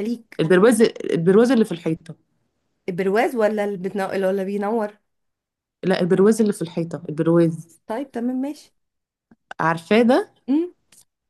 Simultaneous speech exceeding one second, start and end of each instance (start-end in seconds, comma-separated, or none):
none